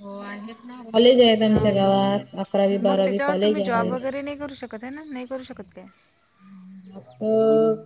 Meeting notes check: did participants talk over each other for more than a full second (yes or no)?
yes